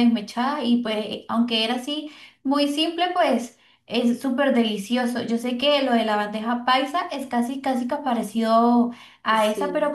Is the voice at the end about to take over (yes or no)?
no